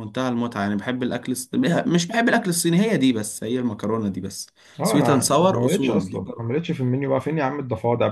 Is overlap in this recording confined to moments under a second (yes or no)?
no